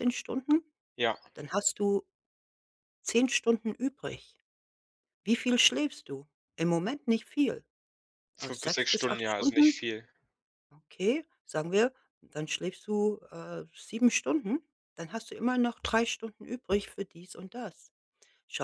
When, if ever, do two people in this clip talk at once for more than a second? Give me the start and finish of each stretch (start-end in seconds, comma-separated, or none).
8.4-9.8